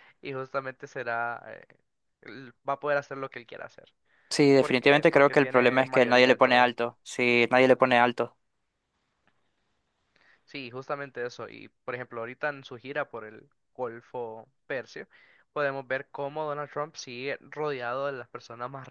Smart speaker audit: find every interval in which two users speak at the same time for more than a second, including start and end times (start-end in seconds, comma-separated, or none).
4.6-6.7